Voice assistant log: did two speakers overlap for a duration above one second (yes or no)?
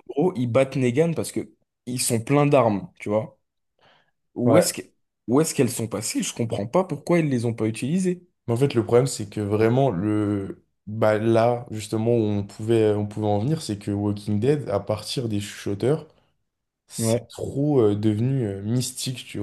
no